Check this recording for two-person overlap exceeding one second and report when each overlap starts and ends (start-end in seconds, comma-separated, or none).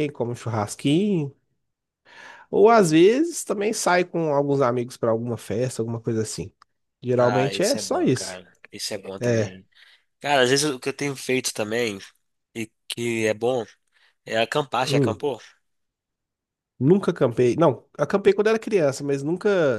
7.2-8.4